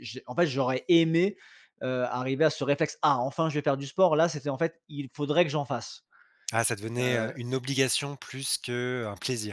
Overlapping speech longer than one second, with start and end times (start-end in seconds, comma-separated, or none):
none